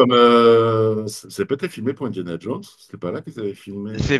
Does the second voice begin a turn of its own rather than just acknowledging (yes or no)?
yes